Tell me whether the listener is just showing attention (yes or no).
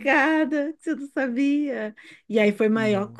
yes